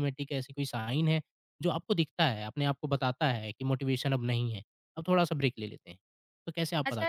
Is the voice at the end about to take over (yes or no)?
yes